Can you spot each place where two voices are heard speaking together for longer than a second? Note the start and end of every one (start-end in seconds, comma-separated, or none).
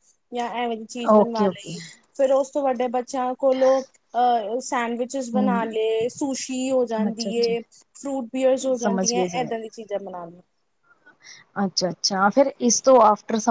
none